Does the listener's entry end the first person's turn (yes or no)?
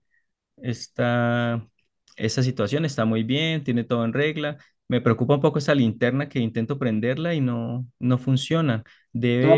yes